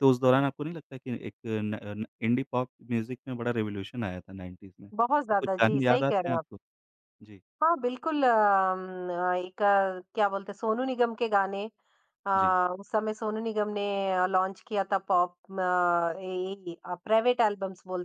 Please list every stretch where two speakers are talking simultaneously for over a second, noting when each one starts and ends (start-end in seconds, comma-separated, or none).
5.0-6.5